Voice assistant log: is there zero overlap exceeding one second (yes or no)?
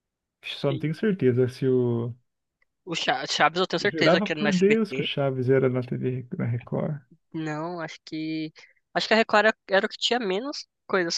no